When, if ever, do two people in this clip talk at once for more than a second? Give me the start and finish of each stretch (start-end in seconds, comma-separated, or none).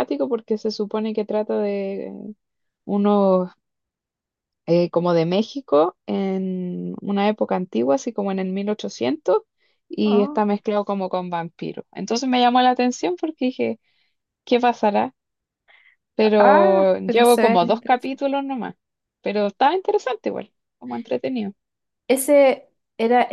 16.4-18.2